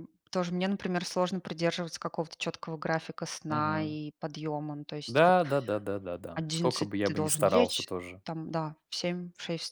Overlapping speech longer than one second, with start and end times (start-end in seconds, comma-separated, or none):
6.3-8.2